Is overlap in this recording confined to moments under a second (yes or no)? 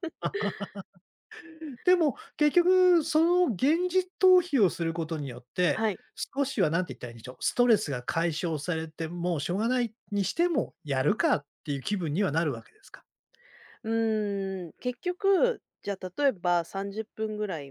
yes